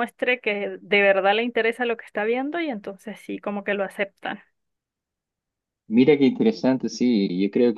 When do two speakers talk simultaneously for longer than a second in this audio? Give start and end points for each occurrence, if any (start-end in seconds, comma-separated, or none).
none